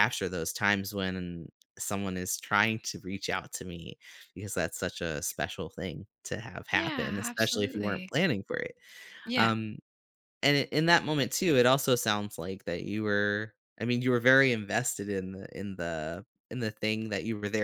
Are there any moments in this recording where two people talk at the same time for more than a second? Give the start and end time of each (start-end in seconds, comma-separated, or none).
6.7-8.1